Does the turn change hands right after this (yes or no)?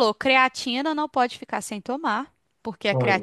no